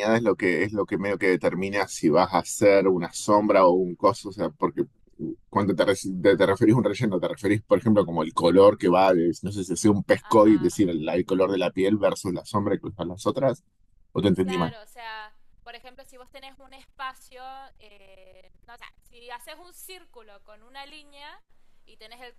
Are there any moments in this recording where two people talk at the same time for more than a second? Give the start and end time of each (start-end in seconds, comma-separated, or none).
none